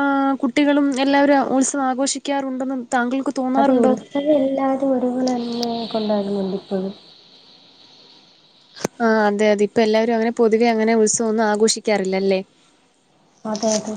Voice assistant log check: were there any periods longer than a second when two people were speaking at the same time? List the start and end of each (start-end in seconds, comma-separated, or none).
none